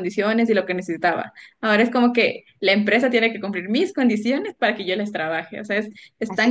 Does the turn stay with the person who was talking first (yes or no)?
no